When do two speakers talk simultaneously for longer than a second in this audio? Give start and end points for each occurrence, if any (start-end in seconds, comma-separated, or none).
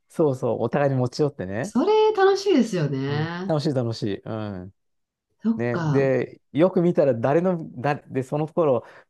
none